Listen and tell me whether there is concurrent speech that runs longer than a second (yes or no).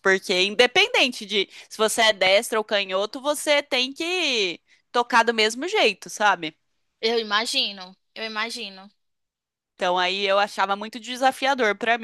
no